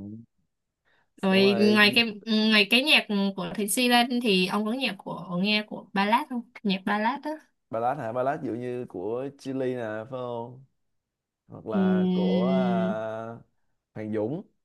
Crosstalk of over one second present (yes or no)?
yes